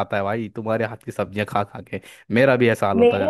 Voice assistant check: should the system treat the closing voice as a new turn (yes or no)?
yes